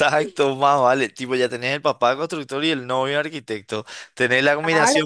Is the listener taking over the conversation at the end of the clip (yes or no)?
no